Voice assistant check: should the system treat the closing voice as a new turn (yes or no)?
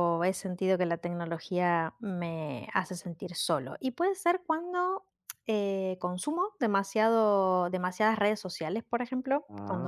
no